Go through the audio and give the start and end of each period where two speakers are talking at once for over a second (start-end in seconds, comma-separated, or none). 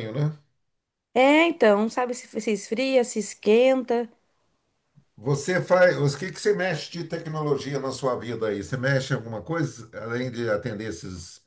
none